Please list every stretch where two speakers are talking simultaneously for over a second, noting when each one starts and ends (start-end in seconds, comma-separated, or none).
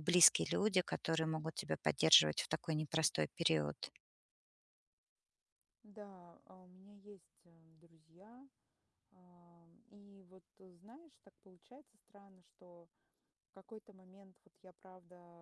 none